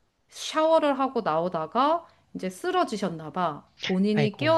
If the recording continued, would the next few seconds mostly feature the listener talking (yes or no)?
no